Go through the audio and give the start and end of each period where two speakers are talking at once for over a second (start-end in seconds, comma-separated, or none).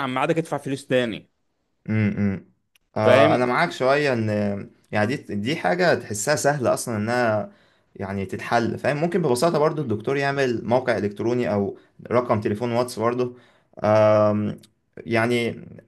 none